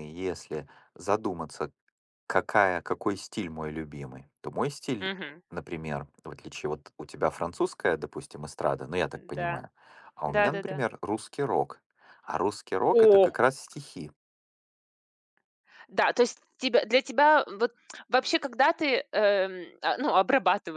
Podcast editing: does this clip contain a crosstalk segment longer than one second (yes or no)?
no